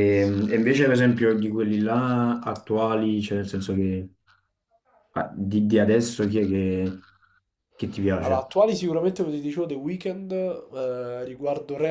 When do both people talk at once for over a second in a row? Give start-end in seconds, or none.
none